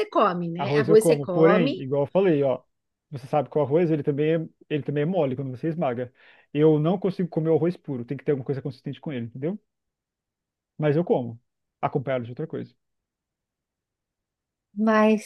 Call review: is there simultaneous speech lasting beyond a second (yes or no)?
yes